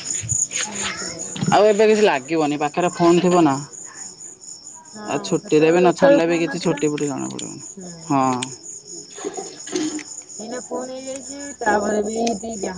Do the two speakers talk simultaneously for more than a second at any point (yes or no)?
yes